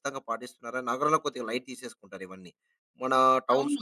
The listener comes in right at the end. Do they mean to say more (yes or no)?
no